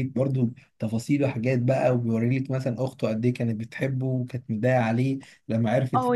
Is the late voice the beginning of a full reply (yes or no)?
yes